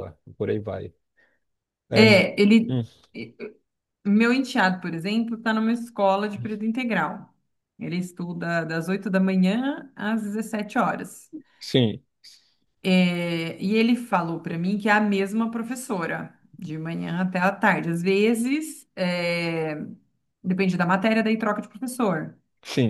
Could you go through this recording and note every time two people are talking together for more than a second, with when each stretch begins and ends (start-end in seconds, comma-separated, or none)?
none